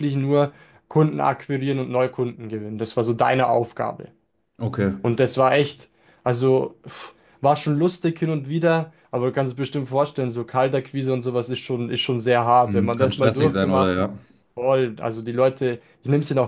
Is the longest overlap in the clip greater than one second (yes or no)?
yes